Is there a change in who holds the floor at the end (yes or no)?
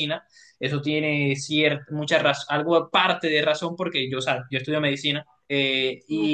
no